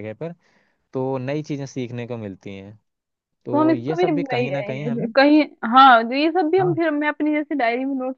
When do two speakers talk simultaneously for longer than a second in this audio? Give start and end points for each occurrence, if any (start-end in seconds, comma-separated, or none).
3.5-5.0